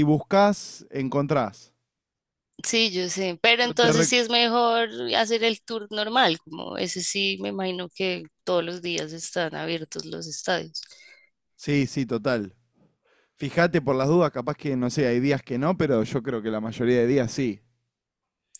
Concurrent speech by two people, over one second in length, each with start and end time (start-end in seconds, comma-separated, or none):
none